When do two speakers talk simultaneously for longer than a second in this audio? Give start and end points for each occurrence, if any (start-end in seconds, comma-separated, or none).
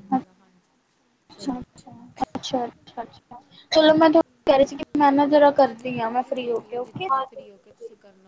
5.6-7.1